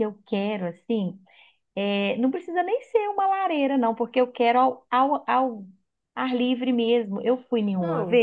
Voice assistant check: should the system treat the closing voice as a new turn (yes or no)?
no